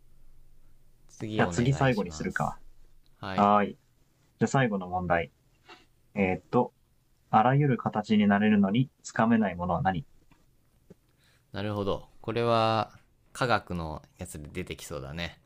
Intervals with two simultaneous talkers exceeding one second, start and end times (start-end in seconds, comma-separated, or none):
1.4-2.6